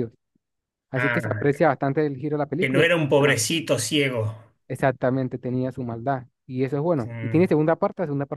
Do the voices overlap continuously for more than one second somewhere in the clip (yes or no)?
no